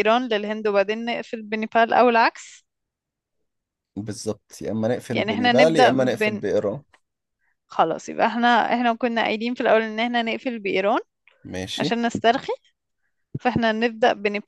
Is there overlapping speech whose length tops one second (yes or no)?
yes